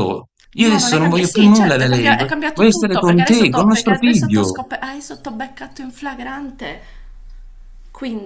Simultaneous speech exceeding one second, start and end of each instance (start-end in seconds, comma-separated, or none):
0.6-4.6